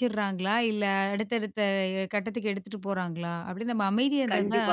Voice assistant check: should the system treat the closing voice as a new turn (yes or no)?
yes